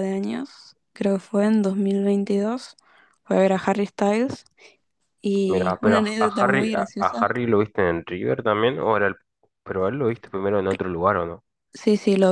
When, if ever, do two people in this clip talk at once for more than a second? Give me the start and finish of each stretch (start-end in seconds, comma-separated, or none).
5.4-7.3